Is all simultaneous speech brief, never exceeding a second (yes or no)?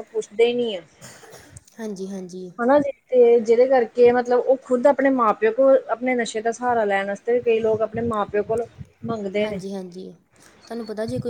yes